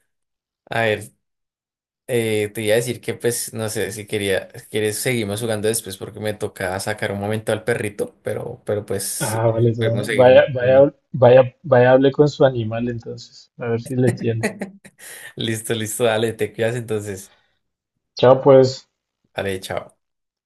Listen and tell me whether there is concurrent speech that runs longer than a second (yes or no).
yes